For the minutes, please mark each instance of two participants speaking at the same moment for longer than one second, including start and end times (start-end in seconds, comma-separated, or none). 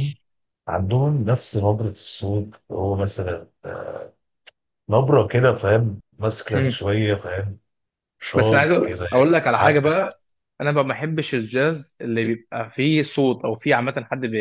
8.3-9.9